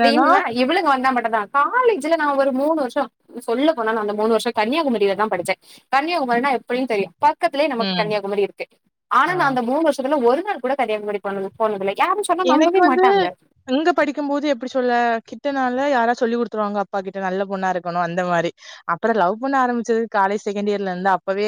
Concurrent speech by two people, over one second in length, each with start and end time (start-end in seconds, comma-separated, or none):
none